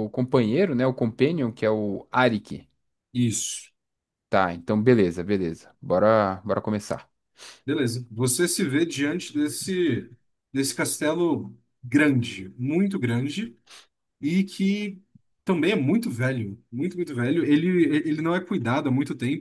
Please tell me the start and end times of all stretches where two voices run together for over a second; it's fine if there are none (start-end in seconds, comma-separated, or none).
none